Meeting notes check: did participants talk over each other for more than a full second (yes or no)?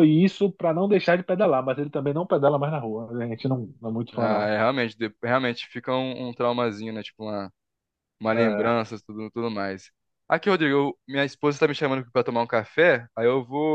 no